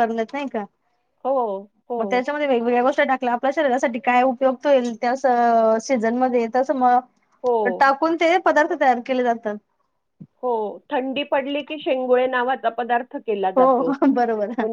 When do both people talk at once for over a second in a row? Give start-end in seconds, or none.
none